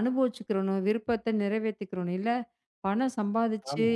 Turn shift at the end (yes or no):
no